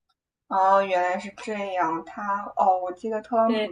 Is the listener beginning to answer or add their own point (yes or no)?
no